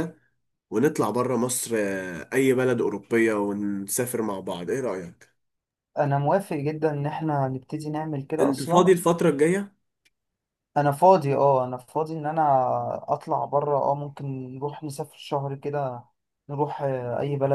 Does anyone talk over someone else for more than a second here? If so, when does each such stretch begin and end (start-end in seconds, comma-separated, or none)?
none